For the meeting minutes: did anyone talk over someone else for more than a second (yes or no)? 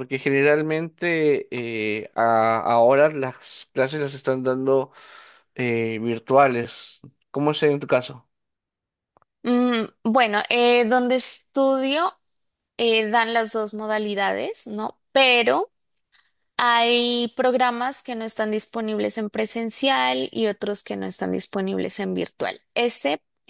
no